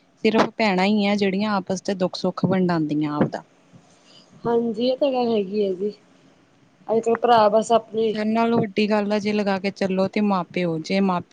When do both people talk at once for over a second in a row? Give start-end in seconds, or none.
none